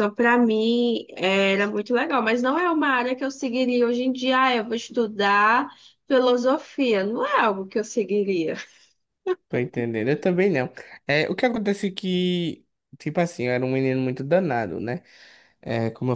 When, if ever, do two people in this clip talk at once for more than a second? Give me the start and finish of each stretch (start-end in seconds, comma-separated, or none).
none